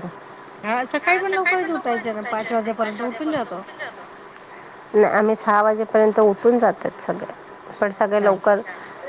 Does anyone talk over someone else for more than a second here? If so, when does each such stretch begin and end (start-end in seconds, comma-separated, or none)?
none